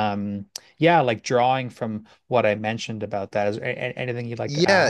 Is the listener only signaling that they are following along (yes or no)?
no